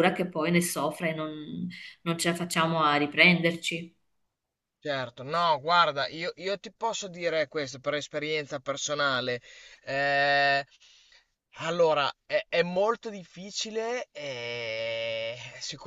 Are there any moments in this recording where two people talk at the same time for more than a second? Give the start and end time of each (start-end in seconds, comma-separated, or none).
none